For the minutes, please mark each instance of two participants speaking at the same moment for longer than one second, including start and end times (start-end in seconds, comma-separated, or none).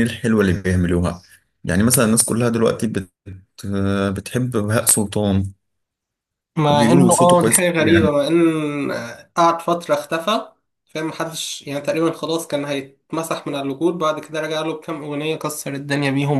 6.7-8.1